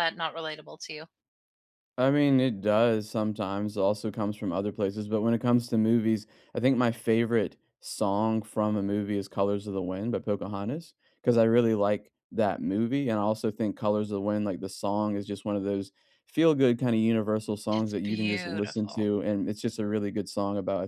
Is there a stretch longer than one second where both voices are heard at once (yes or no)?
yes